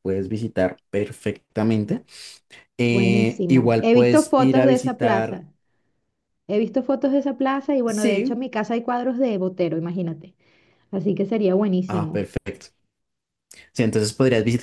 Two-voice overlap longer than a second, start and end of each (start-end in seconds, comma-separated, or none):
2.8-5.4